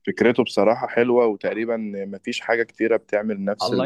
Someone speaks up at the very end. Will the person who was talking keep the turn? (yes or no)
no